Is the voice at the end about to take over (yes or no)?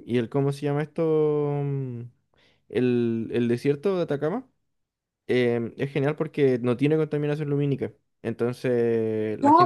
yes